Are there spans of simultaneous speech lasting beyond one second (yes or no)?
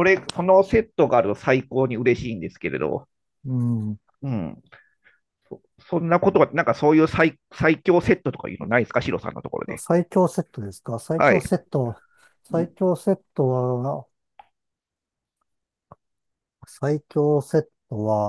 no